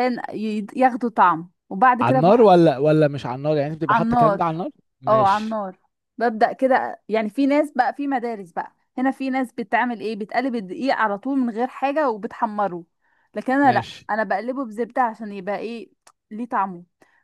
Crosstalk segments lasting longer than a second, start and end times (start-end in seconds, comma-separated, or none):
none